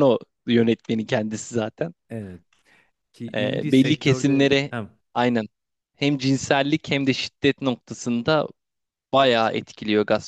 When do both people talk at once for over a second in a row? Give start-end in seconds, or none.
3.3-4.7